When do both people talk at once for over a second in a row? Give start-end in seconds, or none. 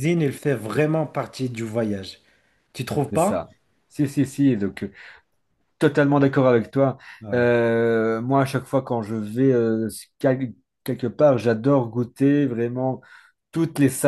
none